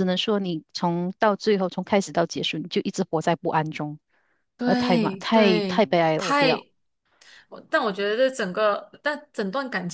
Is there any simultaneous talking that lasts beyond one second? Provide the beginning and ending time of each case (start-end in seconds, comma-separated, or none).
4.6-6.5